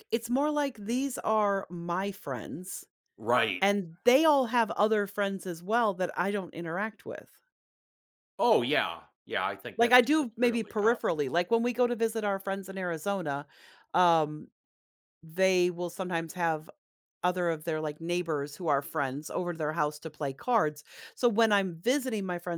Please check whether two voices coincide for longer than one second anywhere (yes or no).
yes